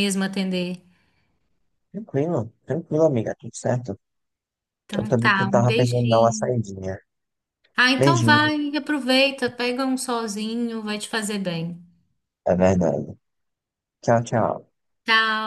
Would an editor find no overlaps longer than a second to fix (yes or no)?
no